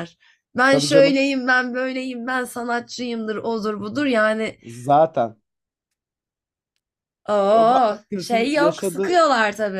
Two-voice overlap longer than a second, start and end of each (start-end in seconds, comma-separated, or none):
7.5-9.2